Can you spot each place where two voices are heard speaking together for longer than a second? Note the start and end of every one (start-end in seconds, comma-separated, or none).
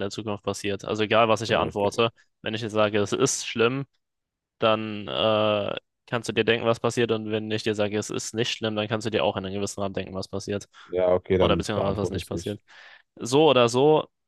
11.4-12.6